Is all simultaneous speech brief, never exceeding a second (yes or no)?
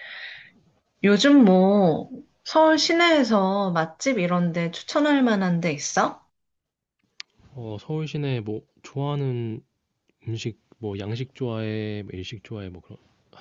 yes